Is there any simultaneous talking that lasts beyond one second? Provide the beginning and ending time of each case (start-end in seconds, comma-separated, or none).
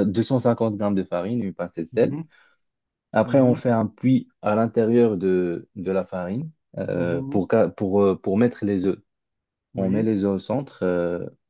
none